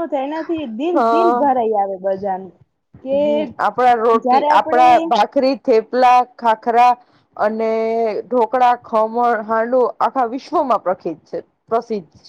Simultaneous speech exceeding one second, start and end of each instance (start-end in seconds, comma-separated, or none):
none